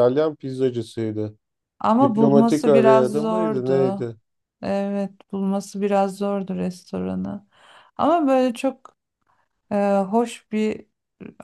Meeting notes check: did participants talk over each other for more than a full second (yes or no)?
yes